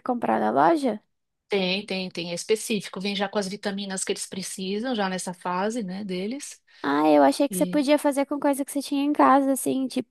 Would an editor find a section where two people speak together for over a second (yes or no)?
no